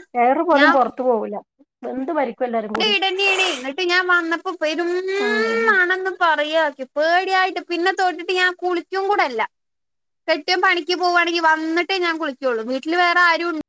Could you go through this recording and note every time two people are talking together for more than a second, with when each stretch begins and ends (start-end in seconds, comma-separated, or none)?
none